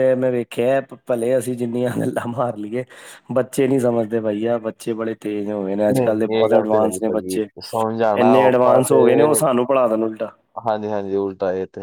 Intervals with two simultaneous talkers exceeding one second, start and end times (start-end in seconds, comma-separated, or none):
5.9-7.5